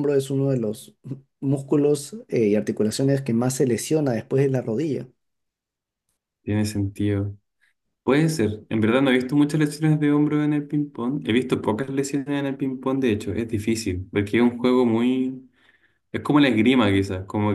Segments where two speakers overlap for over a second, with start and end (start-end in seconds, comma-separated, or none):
none